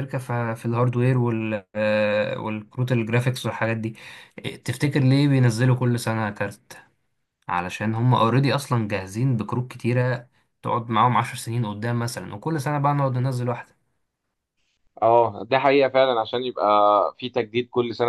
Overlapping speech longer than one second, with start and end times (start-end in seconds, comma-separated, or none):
none